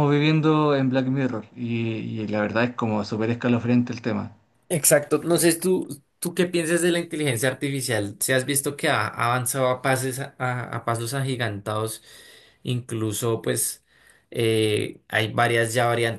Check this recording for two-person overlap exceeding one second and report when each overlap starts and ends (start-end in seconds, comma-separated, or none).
none